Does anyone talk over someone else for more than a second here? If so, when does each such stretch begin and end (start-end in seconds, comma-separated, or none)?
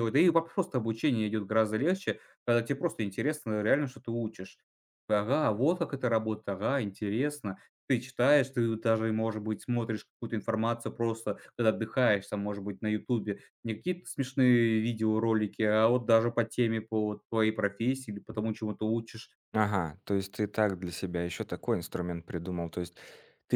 none